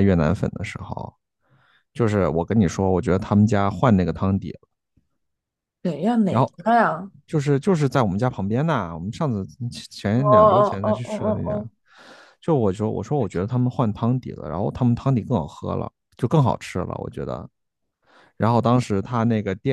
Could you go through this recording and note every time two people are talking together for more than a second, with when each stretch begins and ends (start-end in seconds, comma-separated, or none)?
10.1-11.6